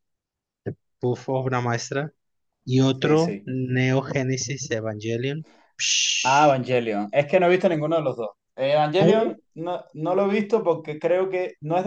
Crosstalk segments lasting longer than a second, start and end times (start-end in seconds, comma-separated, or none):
none